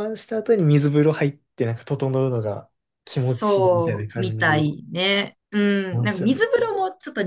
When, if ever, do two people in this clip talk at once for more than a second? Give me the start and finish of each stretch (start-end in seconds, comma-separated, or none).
3.0-4.6